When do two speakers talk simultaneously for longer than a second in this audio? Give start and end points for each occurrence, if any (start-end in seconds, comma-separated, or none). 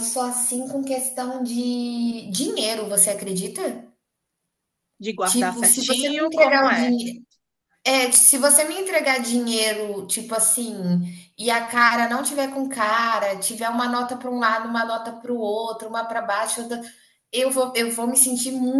5.2-6.9